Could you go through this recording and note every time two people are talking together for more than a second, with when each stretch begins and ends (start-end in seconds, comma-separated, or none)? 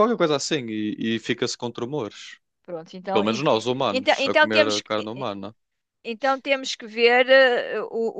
3.1-5.3